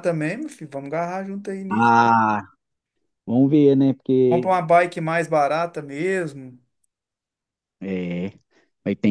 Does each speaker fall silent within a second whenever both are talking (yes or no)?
yes